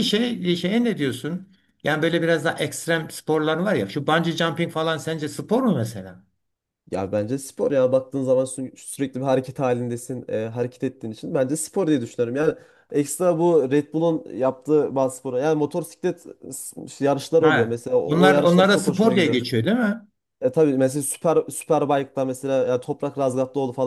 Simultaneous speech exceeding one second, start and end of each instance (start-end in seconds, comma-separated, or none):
17.4-19.4